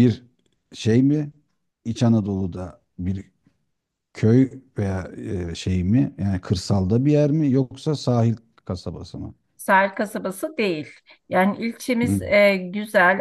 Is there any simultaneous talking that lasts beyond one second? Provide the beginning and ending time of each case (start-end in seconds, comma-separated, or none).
none